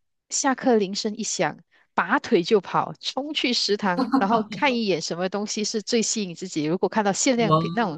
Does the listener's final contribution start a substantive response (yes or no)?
no